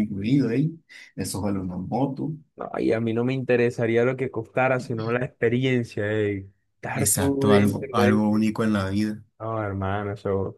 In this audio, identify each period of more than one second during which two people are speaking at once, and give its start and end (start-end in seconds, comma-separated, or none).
6.9-8.4